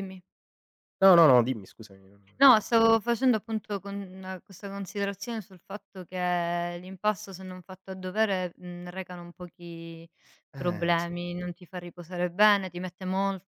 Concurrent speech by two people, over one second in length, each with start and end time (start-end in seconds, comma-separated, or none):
none